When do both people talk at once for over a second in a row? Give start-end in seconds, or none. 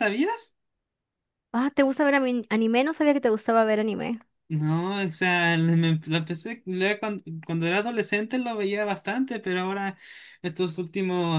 none